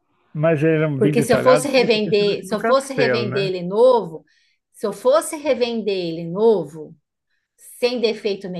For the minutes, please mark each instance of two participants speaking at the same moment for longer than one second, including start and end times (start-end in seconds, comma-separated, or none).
1.0-3.5